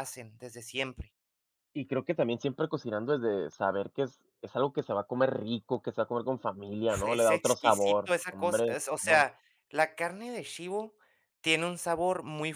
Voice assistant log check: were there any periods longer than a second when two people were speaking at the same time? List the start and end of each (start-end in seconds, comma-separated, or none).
7.0-9.2